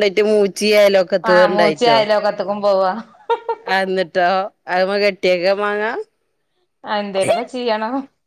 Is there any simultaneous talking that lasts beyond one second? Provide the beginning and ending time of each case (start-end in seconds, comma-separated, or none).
none